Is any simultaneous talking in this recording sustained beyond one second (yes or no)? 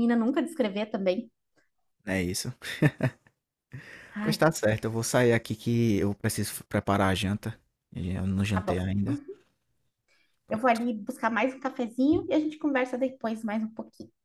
no